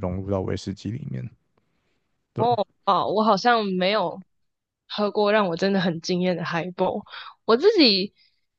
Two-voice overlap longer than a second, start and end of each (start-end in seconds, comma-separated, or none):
none